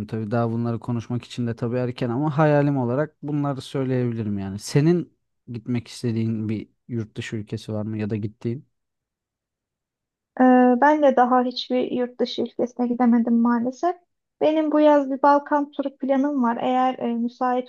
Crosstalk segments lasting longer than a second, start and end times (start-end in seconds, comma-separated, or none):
none